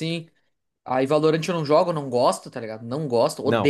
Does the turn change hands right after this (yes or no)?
yes